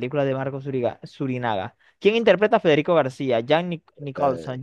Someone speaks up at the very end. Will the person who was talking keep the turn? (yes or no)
yes